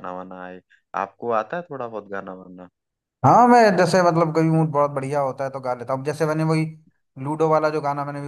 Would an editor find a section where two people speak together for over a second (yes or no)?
no